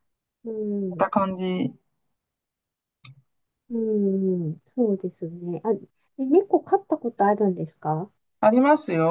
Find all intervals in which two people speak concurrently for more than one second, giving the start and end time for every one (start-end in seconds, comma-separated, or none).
none